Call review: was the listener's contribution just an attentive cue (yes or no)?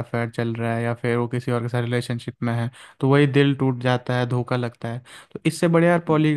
yes